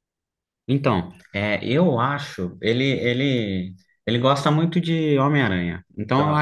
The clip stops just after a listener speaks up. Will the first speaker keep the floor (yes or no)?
yes